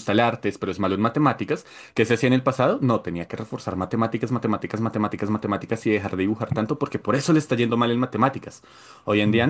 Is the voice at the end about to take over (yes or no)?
no